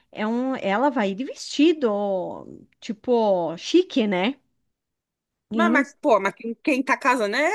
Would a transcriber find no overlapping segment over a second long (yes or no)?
yes